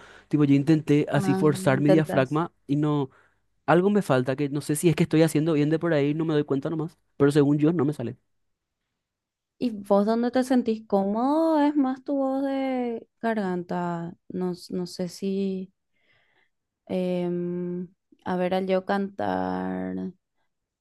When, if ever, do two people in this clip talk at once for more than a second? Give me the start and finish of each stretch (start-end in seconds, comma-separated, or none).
1.1-2.4